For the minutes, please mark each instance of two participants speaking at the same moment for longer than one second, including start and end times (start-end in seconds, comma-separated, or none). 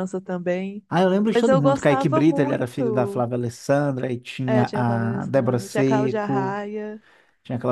1.3-3.2, 4.5-6.6